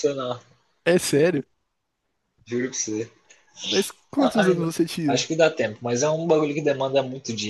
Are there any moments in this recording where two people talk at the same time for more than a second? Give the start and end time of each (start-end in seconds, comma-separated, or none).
none